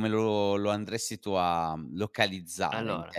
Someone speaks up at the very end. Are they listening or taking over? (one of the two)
listening